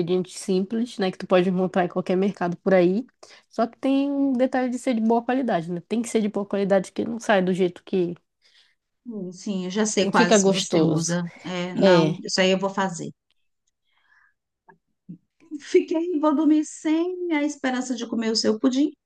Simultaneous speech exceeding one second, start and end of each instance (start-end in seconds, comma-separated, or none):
10.0-11.2